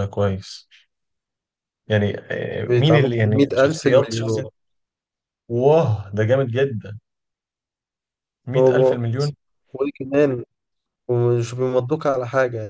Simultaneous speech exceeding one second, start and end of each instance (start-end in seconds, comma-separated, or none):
2.6-4.5